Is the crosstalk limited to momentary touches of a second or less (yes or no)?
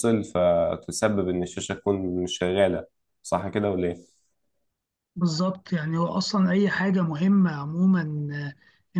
yes